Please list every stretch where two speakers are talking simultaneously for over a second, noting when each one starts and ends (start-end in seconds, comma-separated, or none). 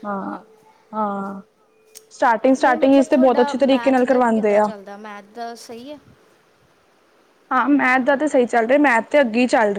2.6-4.7